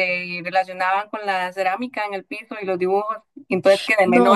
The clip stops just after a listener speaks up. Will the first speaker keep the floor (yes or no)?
yes